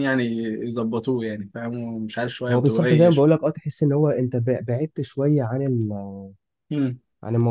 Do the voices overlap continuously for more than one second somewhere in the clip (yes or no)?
no